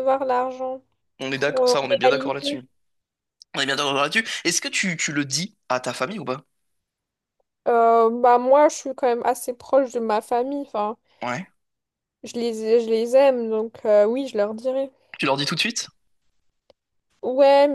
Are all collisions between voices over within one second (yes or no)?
no